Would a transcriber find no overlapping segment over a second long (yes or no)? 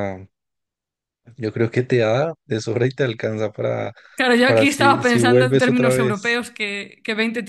no